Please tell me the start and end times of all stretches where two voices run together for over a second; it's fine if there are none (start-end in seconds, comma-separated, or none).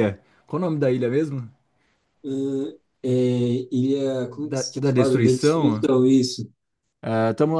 4.2-5.8